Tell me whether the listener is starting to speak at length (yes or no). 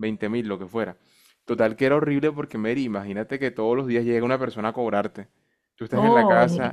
no